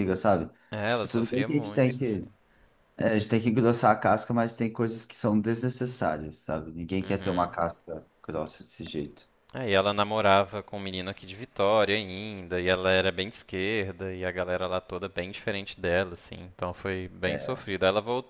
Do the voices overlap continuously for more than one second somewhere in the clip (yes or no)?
yes